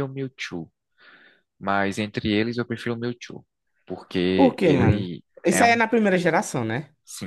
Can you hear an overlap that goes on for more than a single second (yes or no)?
yes